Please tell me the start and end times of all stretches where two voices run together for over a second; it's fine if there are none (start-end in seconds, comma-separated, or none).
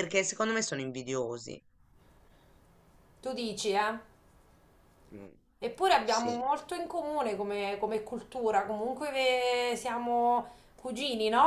none